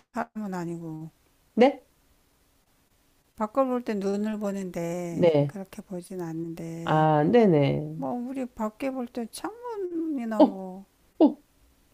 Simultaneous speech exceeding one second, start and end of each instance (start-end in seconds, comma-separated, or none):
none